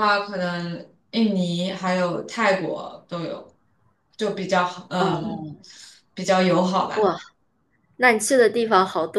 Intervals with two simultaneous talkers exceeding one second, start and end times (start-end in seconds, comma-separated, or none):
none